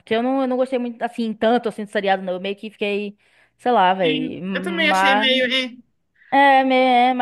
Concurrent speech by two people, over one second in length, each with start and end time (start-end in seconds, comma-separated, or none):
4.0-5.3